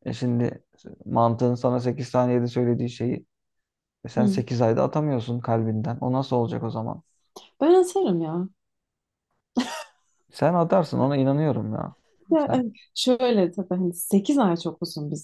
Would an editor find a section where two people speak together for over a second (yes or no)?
no